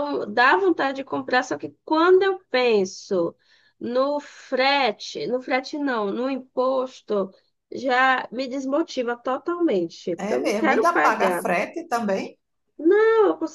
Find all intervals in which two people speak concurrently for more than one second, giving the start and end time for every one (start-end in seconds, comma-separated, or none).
10.2-11.5